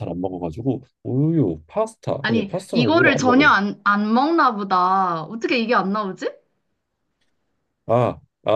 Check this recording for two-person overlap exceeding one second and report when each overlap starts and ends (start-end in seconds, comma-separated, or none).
2.2-3.5